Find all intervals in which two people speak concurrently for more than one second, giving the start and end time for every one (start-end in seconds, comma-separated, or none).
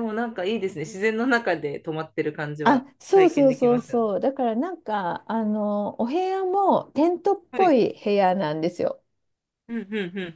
2.6-4.1